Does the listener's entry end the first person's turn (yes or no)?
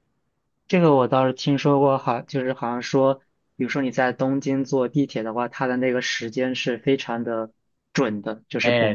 yes